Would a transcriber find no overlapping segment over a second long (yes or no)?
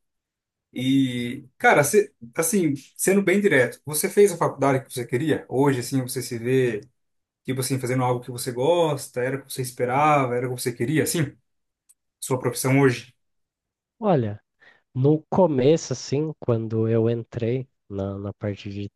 yes